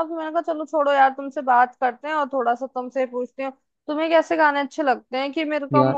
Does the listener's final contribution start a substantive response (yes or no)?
no